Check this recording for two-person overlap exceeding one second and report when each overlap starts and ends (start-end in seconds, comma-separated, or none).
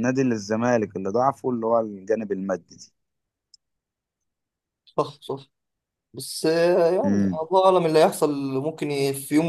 none